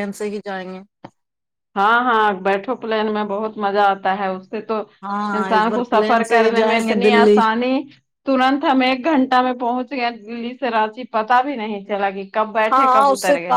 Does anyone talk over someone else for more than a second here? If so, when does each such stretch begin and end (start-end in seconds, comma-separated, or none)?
5.4-7.4